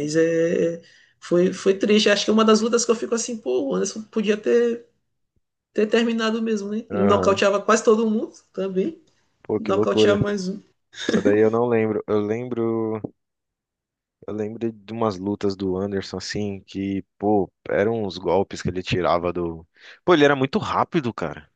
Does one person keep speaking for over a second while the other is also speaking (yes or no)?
no